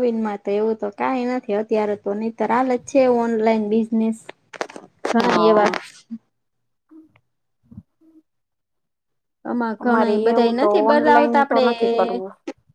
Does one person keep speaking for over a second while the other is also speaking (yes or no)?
yes